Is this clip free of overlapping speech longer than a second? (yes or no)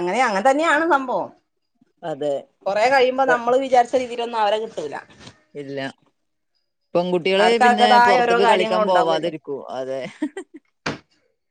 no